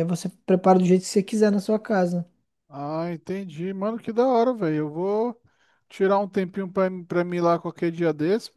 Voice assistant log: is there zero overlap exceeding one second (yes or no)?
yes